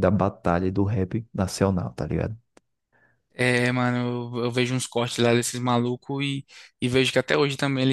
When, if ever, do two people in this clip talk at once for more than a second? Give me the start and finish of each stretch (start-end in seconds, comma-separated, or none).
none